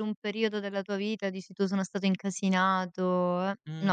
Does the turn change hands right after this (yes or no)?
yes